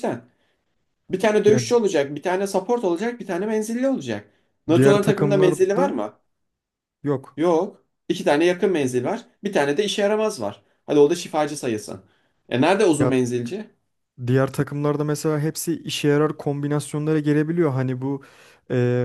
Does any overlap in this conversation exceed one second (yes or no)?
yes